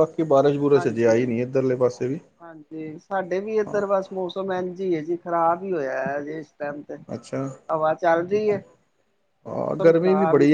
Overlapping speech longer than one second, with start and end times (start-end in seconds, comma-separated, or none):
none